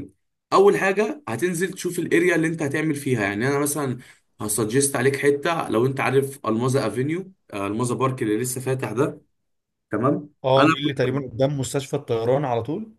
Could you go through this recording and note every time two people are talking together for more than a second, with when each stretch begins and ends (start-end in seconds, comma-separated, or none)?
none